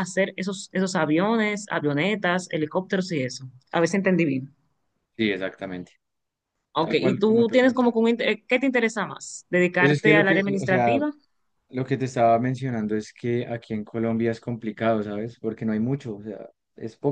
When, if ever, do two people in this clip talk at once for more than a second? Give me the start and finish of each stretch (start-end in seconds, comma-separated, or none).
6.8-8.0, 9.8-11.0